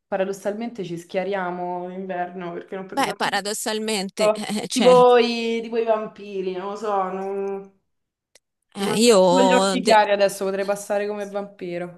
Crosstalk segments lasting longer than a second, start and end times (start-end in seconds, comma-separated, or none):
8.8-10.0